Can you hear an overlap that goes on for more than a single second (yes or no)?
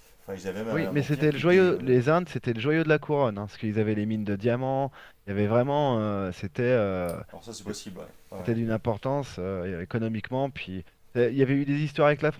yes